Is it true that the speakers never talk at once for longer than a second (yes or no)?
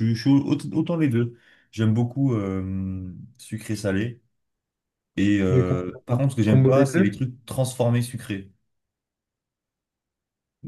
no